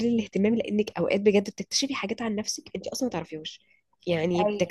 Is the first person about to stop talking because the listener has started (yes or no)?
no